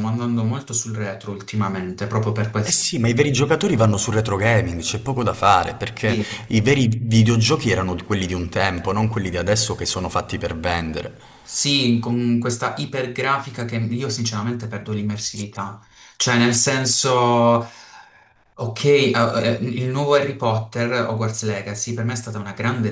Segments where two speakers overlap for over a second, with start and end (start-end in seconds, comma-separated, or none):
none